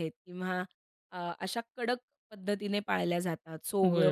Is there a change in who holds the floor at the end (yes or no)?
yes